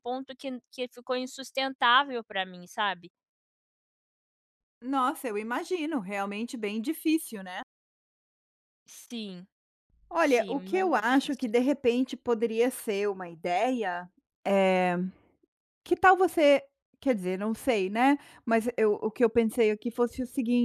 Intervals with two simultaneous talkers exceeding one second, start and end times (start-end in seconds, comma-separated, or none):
10.2-11.5